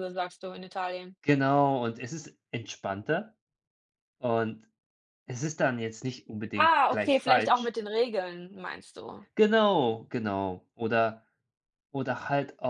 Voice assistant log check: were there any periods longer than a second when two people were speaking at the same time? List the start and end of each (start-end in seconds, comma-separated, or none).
6.5-7.8